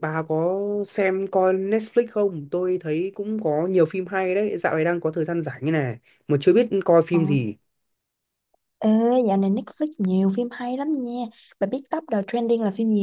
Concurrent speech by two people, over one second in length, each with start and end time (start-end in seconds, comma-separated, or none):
none